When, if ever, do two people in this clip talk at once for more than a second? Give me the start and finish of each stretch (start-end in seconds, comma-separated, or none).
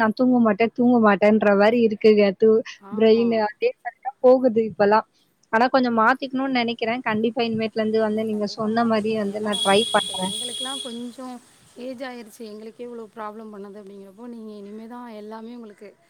none